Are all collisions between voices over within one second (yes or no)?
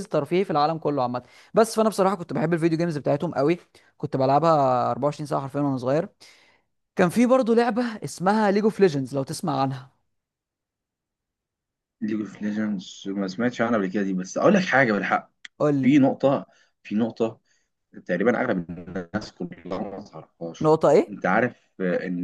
yes